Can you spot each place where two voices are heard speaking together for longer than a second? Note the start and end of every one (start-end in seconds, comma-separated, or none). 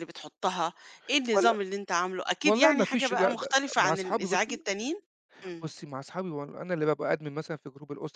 2.4-4.6